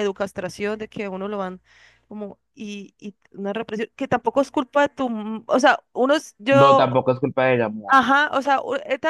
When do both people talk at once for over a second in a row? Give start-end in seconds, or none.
none